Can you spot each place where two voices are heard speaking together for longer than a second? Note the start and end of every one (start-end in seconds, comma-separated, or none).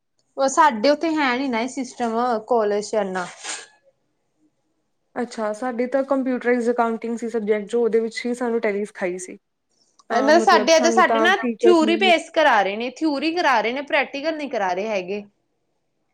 10.2-12.1